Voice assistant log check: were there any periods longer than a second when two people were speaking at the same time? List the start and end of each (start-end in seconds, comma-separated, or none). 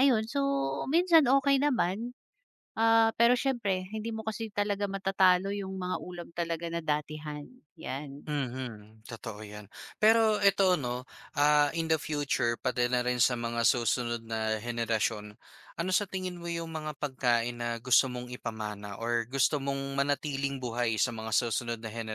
none